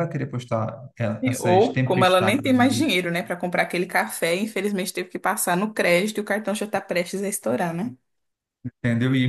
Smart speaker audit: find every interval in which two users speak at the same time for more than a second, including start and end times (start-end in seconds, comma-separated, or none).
1.4-2.8